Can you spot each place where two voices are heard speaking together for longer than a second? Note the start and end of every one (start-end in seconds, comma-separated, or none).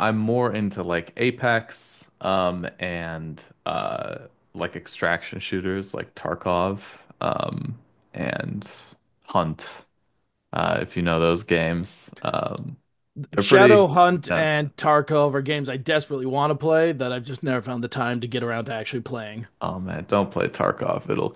13.3-14.7